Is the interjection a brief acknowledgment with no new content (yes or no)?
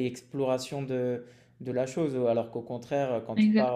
yes